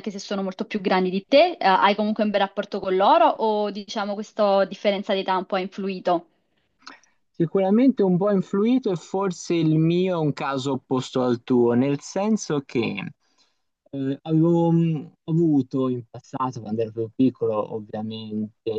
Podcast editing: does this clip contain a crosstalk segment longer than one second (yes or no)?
no